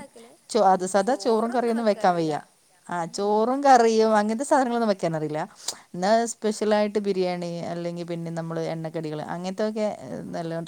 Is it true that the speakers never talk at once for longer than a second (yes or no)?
no